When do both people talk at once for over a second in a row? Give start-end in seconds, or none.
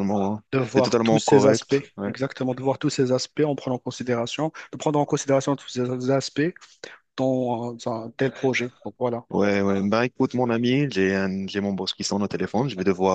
0.5-2.1